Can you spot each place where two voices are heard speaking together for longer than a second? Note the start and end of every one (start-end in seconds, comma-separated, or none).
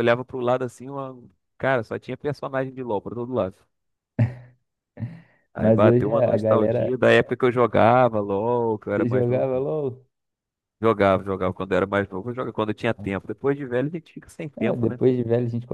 5.6-6.9